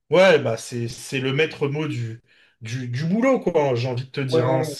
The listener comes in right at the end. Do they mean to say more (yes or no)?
yes